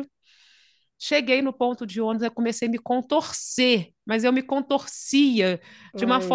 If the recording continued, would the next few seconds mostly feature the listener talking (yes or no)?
no